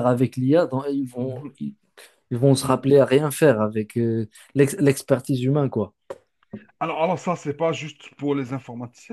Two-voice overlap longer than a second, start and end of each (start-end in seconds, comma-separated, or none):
none